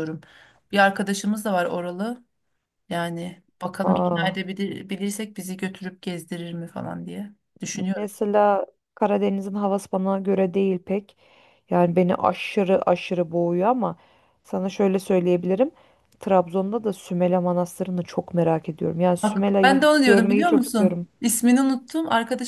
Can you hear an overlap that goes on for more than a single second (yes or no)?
yes